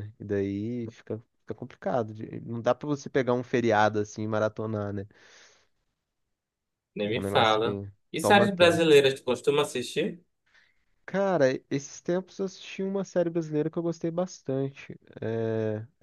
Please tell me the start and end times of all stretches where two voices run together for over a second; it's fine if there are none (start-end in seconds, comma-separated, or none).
7.1-8.9